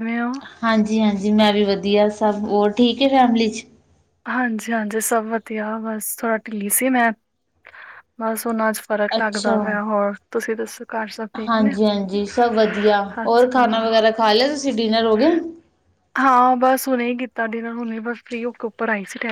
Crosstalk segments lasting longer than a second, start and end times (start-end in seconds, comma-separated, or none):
none